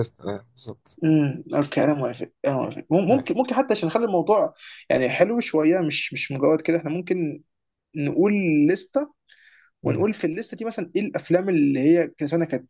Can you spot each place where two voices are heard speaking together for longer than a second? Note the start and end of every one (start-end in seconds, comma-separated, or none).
none